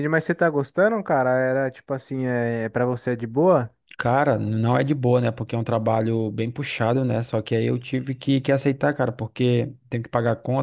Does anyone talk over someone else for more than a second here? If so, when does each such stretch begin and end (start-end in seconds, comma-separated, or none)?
none